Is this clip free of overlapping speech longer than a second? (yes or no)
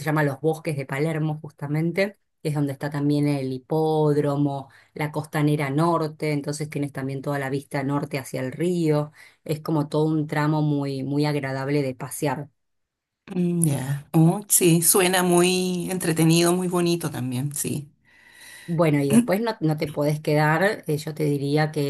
yes